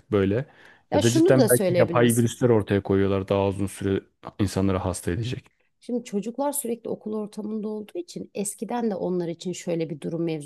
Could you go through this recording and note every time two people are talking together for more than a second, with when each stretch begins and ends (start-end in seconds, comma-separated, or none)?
0.9-2.2